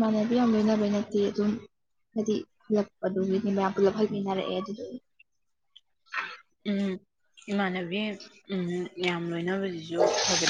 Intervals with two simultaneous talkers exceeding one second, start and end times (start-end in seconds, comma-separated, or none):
none